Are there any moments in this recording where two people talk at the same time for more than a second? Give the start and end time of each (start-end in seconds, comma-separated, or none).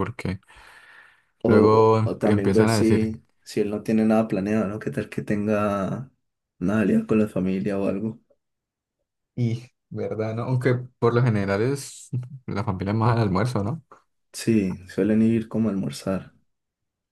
1.4-3.1